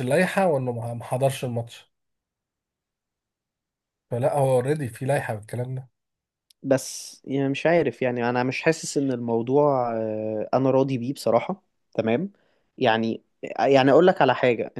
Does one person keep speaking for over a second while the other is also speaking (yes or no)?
no